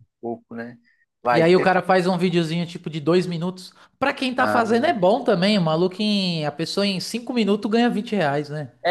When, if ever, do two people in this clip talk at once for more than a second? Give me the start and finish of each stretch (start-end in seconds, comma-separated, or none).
none